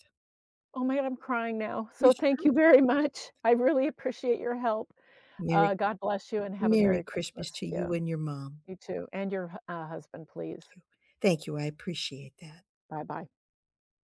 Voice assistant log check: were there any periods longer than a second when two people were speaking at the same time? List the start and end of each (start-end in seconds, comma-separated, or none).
6.6-7.9